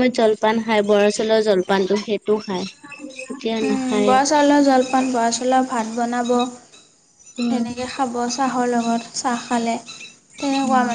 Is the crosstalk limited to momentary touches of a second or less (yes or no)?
yes